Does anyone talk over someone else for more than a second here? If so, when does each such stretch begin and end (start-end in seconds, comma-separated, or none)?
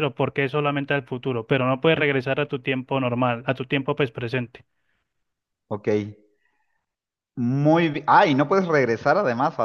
none